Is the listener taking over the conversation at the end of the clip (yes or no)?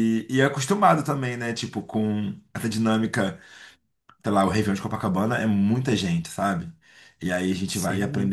no